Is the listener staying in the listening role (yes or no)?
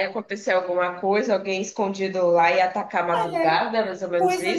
no